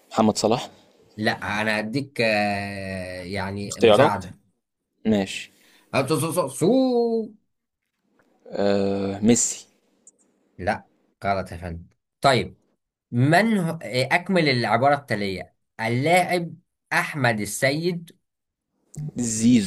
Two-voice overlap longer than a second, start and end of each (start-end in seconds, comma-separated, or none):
none